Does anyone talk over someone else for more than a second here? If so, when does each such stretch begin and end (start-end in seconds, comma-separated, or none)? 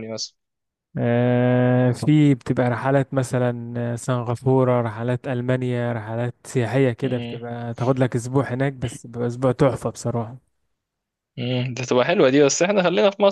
none